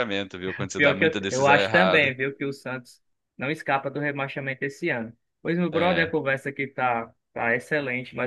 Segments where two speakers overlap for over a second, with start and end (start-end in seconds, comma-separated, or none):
0.8-2.1